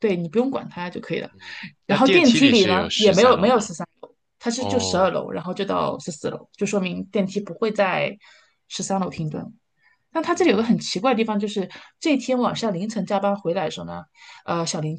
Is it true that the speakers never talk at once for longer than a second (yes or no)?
no